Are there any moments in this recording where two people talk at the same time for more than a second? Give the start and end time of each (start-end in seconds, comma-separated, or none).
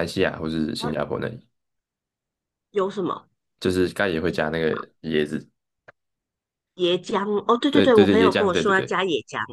7.7-9.0